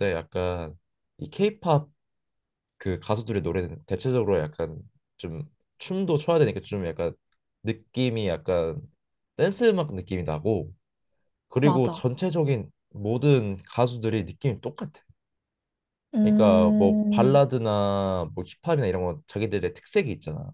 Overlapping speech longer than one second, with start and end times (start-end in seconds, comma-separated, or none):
16.2-17.4